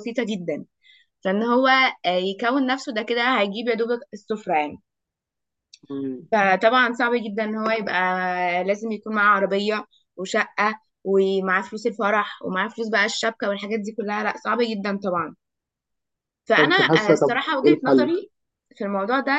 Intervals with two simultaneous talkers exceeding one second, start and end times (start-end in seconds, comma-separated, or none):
16.6-18.1